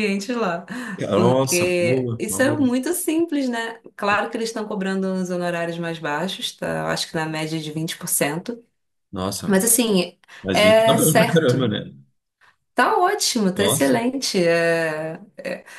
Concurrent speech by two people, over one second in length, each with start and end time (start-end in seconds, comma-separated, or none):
1.1-2.7, 10.4-11.7